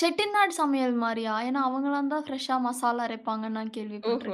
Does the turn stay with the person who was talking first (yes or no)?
no